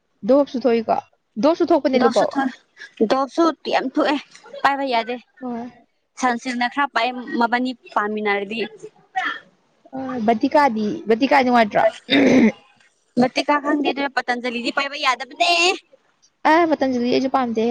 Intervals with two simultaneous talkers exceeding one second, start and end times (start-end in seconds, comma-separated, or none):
none